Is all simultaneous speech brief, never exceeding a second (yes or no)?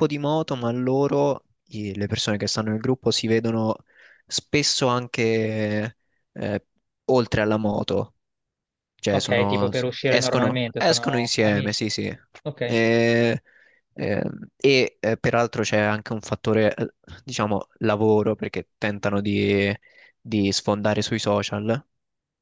no